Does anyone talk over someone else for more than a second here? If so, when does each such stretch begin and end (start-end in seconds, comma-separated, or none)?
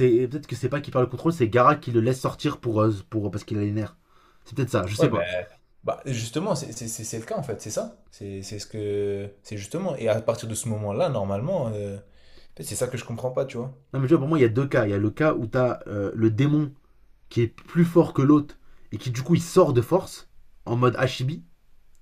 none